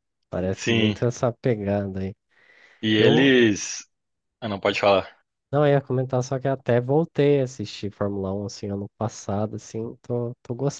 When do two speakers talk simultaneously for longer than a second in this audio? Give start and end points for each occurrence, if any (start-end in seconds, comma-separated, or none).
none